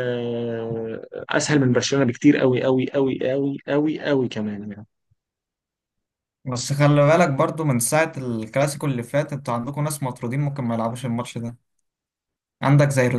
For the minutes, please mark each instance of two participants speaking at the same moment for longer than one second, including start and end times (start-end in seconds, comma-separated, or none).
none